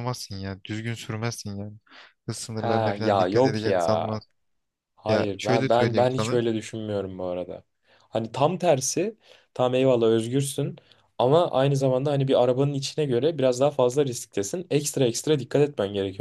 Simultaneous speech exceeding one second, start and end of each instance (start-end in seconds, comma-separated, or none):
2.5-4.1, 5.1-6.4